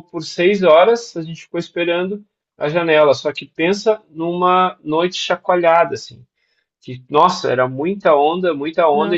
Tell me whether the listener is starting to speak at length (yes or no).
no